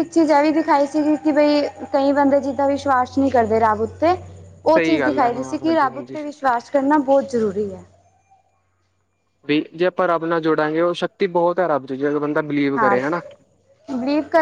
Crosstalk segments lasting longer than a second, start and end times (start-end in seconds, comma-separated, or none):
4.7-6.2